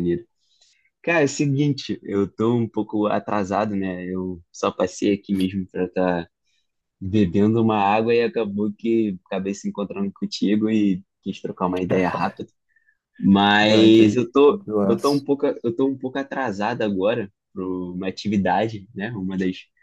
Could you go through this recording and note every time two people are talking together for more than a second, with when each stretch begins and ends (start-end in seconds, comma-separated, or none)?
13.7-15.2